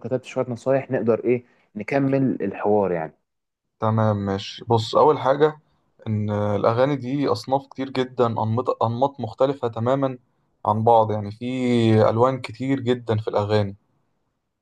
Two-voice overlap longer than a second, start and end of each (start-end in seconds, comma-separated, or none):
none